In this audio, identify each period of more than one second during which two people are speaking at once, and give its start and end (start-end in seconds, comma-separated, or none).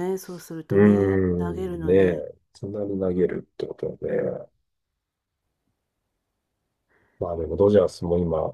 0.7-2.3